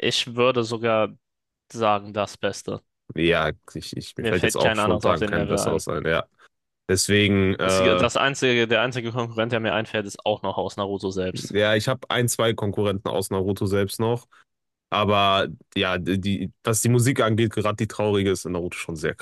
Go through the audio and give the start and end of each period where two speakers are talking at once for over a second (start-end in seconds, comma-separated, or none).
4.2-5.8